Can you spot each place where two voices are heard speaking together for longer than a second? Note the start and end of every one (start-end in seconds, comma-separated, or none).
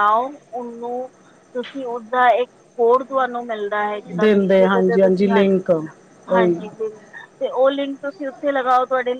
4.2-5.6